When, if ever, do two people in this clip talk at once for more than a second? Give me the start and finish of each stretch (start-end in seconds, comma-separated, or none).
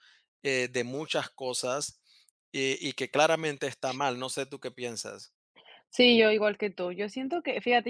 none